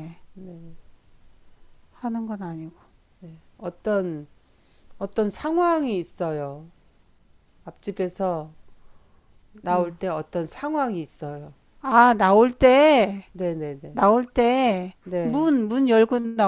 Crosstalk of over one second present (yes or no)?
no